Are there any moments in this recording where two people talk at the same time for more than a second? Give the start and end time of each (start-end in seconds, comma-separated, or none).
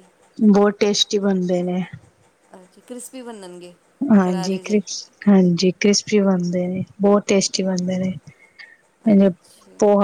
none